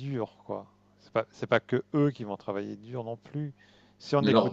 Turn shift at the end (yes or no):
yes